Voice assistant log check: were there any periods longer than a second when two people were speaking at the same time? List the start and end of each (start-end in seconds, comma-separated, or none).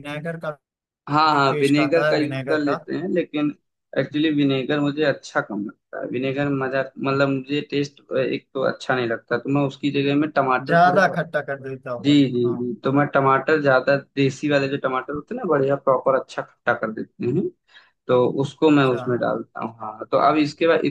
1.3-2.8